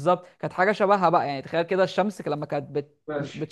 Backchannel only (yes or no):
yes